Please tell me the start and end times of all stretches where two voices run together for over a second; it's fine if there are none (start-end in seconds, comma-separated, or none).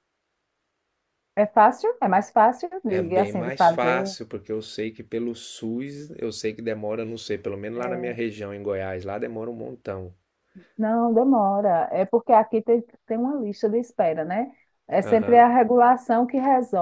2.9-4.2